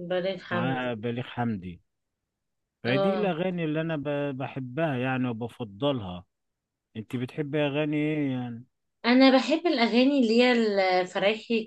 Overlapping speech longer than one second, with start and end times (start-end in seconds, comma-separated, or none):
none